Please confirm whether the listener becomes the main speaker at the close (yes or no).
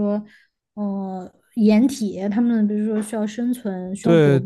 yes